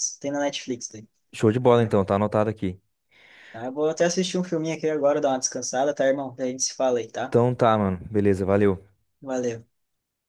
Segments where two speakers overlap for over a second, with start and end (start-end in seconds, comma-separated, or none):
none